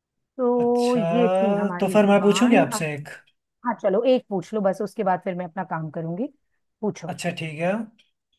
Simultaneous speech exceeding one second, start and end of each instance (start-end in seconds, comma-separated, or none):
0.6-2.9